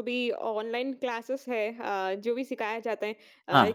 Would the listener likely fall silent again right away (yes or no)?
yes